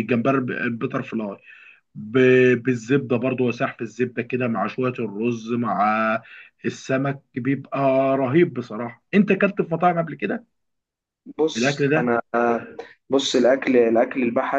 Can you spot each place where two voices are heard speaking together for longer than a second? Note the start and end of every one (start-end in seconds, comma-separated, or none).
none